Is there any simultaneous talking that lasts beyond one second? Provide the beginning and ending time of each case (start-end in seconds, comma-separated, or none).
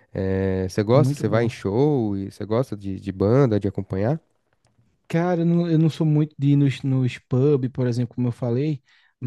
none